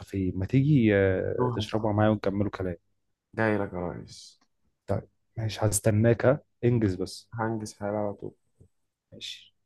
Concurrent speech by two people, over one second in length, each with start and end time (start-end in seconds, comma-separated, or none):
none